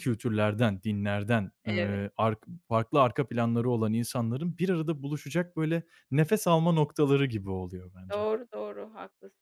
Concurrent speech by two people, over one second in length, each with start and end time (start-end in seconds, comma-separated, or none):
none